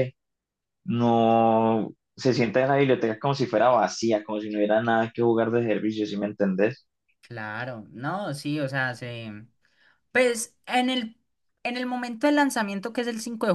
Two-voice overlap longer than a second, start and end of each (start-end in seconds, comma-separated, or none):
none